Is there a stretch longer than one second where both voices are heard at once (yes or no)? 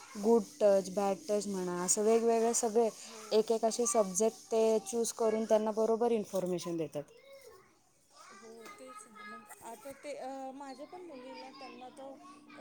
no